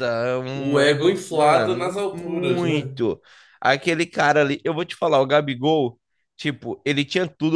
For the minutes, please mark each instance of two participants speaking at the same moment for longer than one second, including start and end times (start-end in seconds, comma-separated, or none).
0.5-2.9